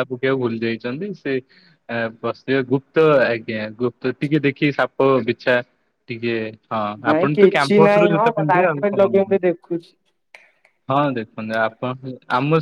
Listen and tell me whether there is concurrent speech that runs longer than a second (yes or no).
yes